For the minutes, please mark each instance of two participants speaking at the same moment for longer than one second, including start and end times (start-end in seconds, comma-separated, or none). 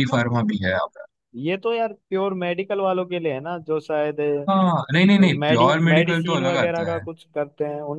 5.2-7.0